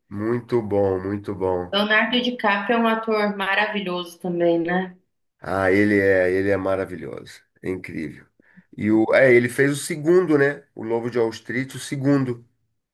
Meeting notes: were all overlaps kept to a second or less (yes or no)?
yes